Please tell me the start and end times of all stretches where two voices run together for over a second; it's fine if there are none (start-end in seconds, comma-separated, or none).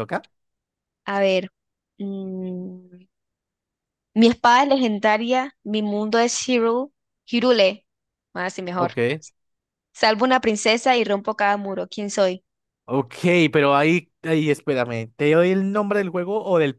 none